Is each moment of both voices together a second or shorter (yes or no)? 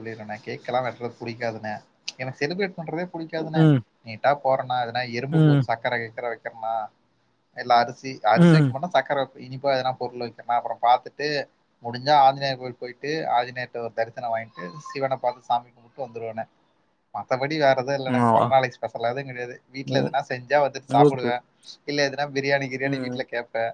yes